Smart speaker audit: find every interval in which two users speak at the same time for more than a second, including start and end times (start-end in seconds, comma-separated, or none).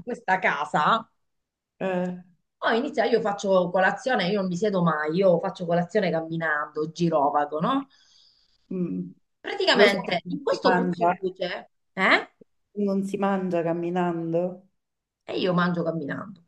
9.7-11.1